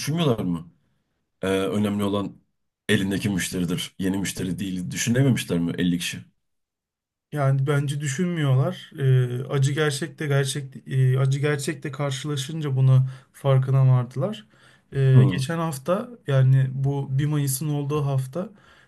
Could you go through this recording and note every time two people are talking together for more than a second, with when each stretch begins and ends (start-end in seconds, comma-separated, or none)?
none